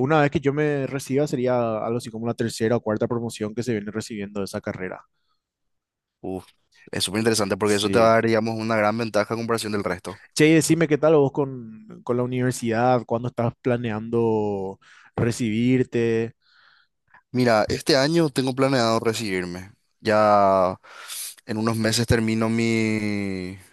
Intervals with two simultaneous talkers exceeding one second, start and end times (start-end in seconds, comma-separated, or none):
none